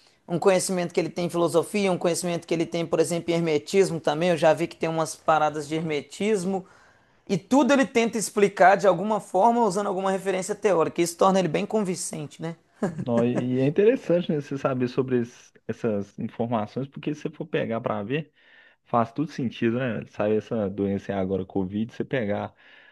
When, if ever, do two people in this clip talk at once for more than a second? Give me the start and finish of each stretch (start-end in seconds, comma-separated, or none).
none